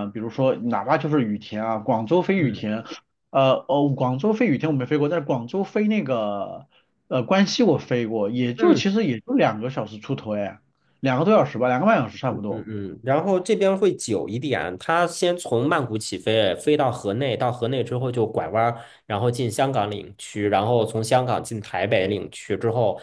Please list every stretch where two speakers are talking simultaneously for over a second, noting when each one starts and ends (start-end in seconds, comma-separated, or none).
none